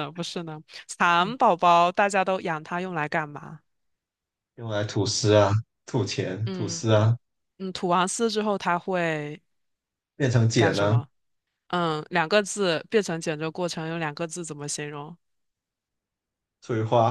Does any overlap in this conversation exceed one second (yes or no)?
no